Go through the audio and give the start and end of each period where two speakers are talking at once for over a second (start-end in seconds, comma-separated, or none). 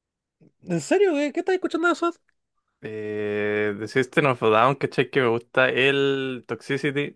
none